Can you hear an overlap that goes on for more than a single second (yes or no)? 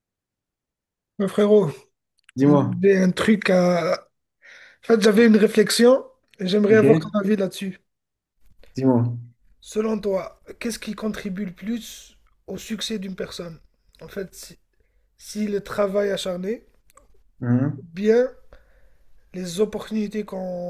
no